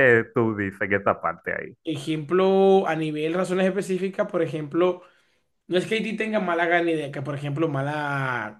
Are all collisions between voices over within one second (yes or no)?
yes